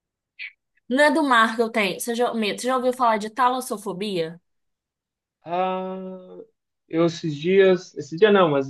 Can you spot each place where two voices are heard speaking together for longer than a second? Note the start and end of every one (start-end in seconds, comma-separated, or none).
none